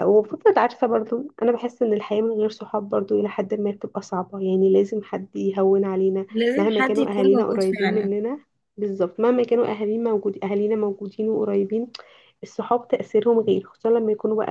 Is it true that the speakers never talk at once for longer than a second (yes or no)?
no